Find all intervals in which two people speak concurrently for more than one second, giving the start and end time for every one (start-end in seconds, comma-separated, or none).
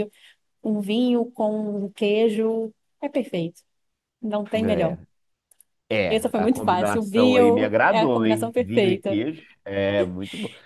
6.1-9.2